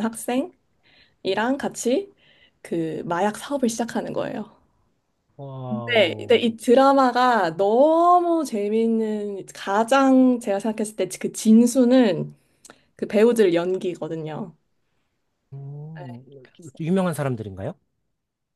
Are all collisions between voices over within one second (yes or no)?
yes